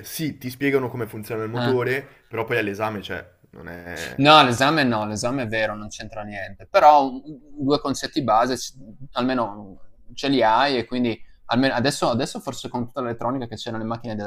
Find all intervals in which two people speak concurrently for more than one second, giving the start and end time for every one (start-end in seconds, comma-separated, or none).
none